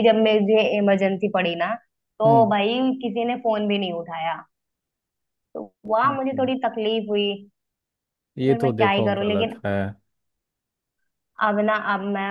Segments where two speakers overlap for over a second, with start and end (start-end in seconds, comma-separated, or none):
8.4-9.6